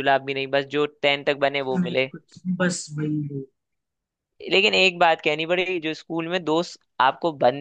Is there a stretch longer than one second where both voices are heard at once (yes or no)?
no